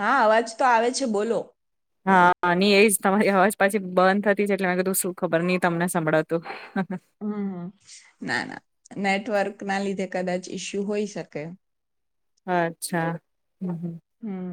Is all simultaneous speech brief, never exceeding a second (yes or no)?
yes